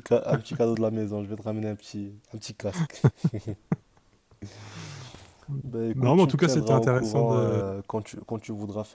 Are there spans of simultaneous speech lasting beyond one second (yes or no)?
yes